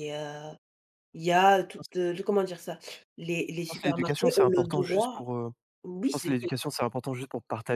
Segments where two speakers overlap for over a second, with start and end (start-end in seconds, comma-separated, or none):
3.6-5.2